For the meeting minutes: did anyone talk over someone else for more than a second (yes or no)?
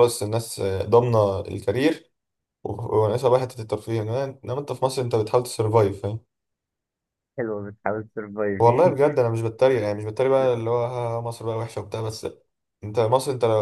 no